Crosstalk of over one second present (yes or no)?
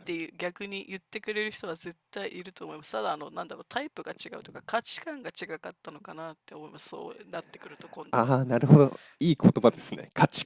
no